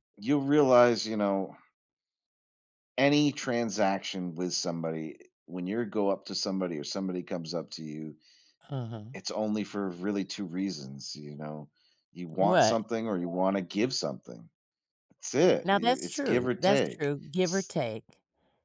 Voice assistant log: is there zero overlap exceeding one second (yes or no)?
no